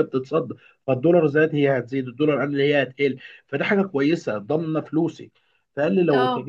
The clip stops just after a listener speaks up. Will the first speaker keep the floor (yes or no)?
yes